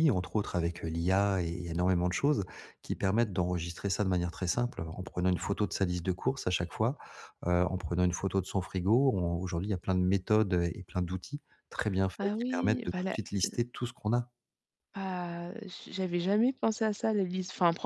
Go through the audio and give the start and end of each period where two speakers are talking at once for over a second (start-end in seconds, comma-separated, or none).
12.2-13.6